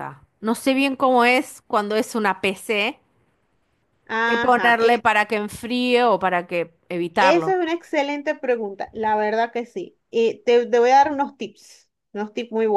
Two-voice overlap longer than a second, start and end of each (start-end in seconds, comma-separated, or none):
none